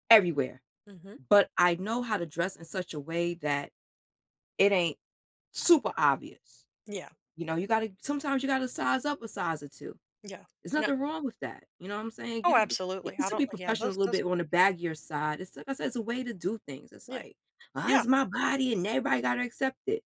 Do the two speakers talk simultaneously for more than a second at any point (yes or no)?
yes